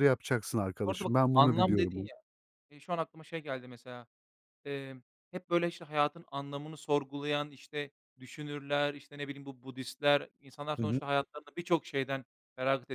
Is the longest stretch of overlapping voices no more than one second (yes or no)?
no